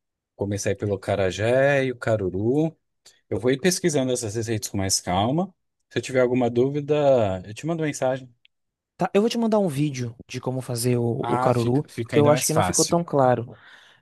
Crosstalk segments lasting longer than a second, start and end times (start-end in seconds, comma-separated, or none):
11.2-13.0